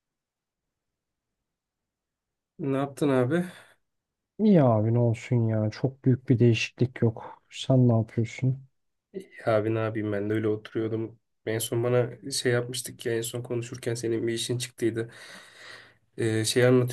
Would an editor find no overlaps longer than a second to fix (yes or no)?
yes